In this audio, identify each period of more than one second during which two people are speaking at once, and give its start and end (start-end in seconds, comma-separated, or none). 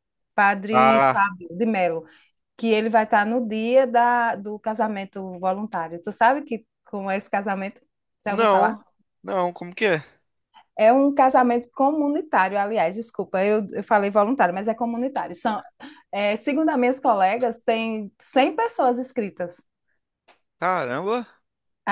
none